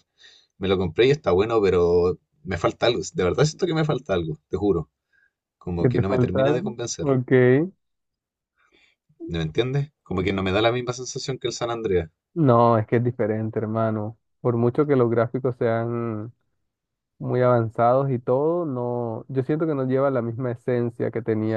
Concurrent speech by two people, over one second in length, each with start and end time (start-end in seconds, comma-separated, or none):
5.8-7.2